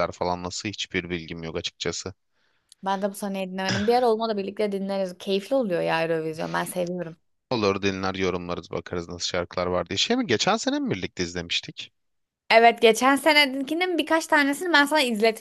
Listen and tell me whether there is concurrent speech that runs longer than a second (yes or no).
no